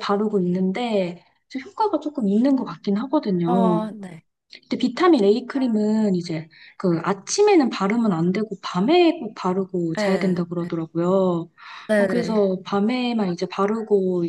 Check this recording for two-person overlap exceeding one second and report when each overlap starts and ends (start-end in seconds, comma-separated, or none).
none